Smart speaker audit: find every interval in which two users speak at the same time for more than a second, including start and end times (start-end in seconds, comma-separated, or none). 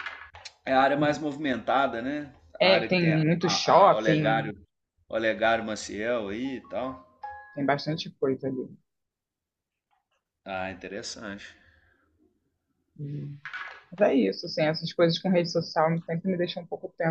2.6-4.5